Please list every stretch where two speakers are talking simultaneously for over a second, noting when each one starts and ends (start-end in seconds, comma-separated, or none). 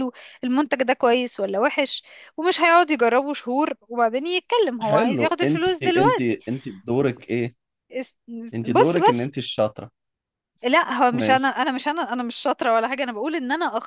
4.8-6.4